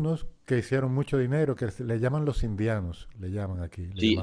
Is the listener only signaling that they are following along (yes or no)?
no